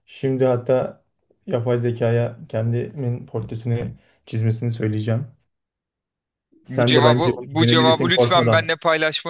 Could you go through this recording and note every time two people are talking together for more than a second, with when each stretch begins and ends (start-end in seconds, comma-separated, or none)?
6.7-8.8